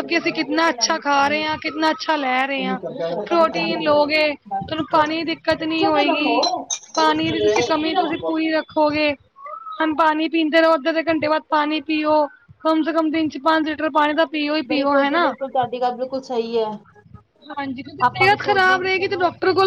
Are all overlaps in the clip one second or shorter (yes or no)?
yes